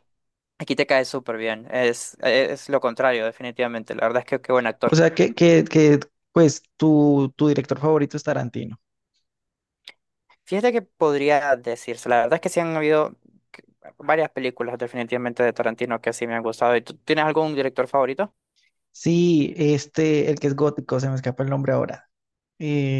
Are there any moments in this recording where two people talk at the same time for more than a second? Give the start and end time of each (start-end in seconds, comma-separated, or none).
none